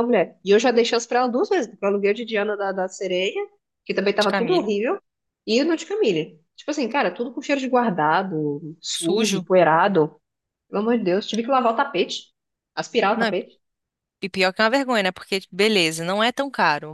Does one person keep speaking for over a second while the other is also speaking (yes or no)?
no